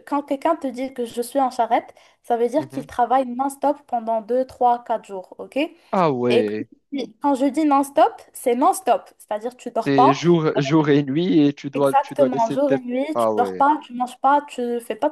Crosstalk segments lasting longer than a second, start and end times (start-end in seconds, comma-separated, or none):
11.7-13.7